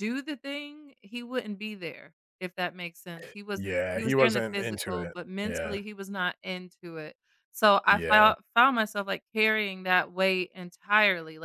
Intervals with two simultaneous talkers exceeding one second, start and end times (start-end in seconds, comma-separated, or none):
3.5-5.8